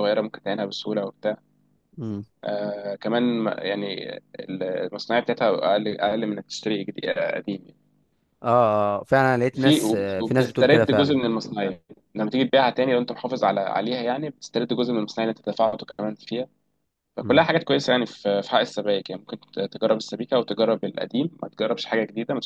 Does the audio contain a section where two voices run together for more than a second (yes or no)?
yes